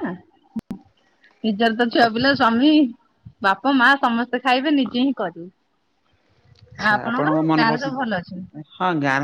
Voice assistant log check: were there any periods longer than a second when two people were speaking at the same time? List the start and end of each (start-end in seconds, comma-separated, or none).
6.8-8.4